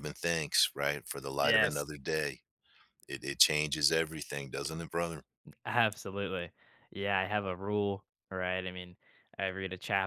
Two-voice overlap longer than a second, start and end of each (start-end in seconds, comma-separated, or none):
none